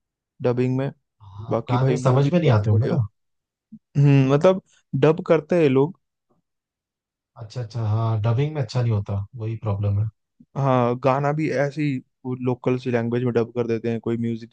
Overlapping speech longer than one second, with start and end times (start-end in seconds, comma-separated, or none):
1.5-3.0